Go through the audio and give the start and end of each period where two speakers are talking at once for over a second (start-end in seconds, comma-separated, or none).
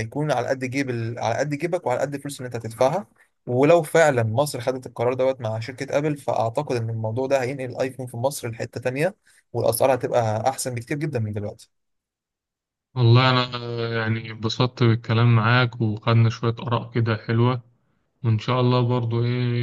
none